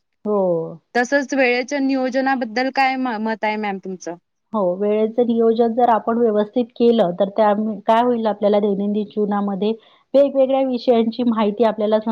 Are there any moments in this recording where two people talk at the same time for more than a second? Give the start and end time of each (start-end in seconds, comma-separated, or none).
none